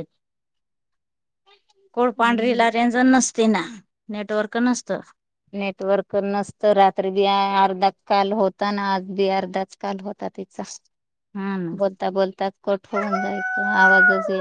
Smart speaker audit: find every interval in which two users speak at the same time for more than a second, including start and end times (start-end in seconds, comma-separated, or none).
none